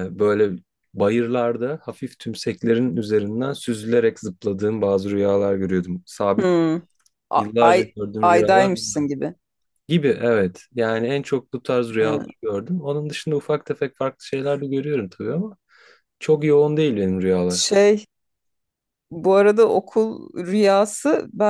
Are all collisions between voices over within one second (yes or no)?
no